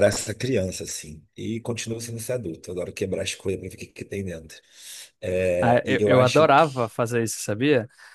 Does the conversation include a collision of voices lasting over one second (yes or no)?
yes